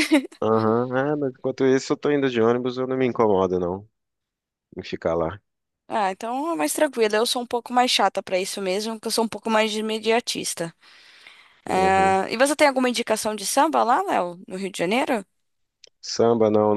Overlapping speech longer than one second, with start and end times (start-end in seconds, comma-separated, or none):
none